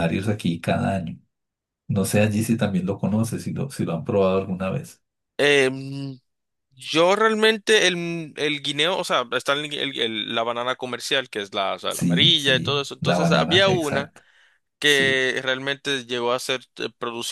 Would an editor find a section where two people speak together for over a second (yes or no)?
yes